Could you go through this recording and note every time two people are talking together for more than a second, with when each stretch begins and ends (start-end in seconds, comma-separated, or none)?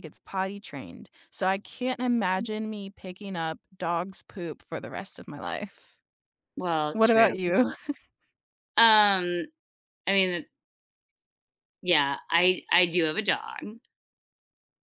none